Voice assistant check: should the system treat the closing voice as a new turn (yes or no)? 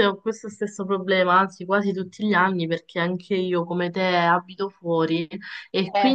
no